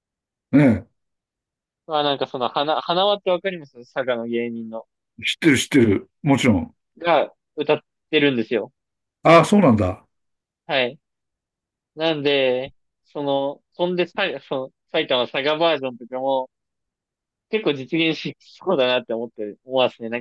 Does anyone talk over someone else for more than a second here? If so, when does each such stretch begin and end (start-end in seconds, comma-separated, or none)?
none